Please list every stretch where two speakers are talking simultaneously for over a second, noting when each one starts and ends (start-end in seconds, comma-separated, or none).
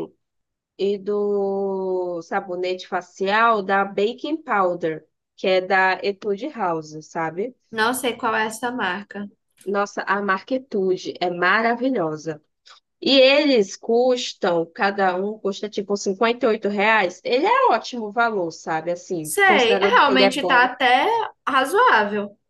19.2-20.7